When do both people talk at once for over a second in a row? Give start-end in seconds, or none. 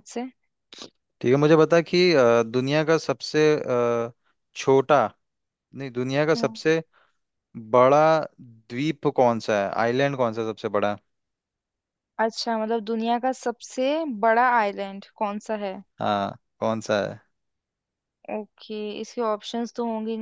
none